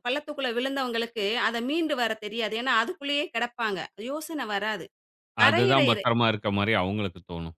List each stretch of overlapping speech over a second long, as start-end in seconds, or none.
none